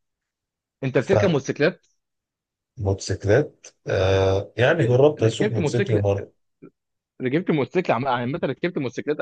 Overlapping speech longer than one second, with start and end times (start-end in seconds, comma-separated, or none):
4.7-6.0